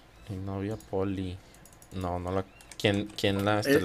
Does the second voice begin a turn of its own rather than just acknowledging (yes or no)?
yes